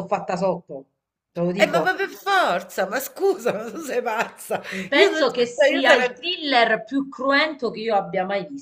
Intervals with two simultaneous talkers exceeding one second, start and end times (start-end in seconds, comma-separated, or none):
4.9-6.2